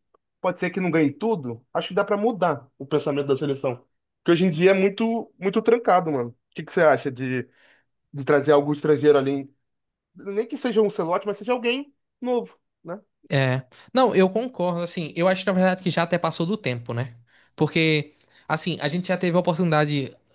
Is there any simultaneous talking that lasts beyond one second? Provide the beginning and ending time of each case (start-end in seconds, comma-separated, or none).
none